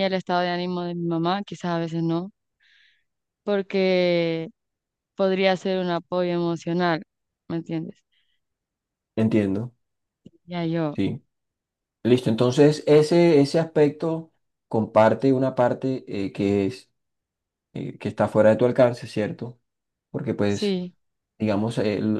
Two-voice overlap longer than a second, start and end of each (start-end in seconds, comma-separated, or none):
none